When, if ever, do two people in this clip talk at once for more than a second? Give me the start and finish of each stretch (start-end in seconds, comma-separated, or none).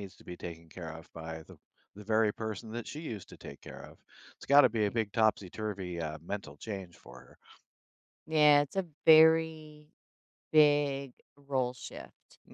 none